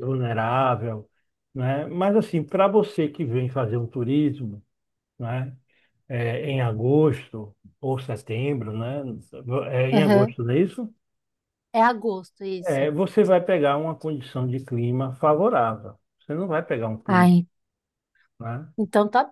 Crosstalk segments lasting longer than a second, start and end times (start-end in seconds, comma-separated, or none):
none